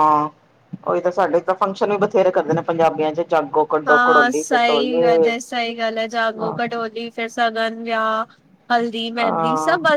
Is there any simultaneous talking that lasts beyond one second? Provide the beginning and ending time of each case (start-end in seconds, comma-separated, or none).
3.9-5.3